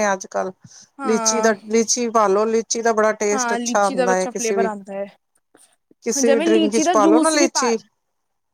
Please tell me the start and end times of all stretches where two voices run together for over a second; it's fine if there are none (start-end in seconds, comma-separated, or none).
3.3-4.7, 6.2-7.7